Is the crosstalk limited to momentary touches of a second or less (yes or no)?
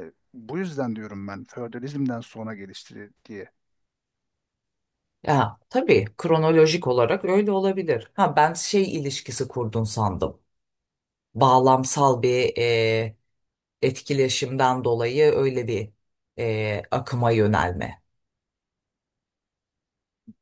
yes